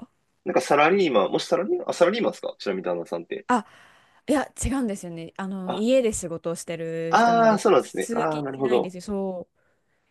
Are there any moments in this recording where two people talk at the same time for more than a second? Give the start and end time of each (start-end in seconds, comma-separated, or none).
7.1-8.9